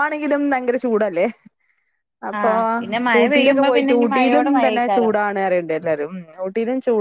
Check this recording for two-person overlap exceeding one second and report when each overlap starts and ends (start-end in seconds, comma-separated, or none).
3.2-5.1